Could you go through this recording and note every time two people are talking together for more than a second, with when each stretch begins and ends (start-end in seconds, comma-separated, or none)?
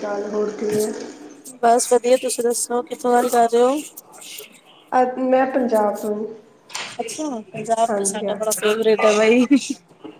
none